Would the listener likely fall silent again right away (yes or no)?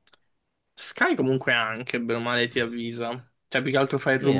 yes